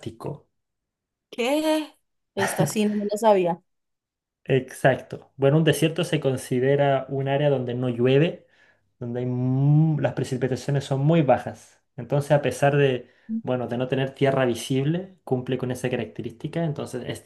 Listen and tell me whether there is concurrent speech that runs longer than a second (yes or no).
no